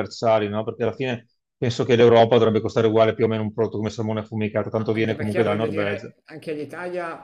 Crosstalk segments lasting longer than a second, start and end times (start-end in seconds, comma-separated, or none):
4.7-6.1